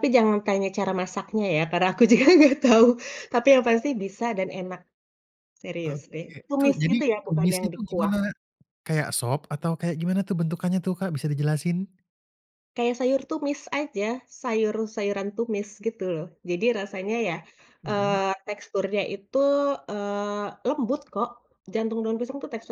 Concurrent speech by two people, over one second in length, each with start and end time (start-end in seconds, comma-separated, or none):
5.8-8.1